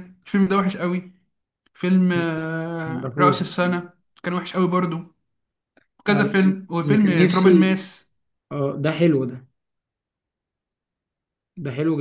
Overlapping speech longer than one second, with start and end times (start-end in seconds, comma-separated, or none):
6.1-7.8